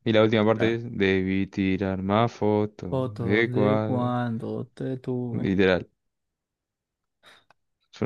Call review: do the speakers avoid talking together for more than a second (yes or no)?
no